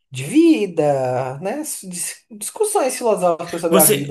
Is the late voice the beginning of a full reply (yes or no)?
yes